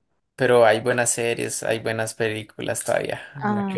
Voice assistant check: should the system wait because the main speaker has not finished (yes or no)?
no